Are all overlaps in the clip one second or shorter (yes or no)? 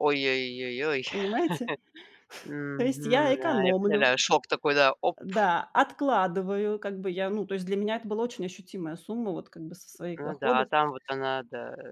no